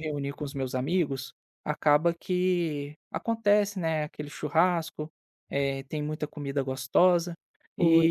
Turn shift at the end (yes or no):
no